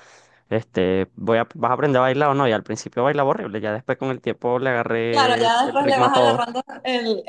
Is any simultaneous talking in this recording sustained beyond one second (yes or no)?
yes